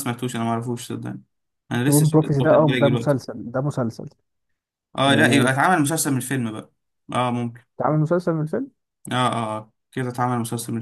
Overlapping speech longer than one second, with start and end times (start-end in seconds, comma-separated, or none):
1.9-3.1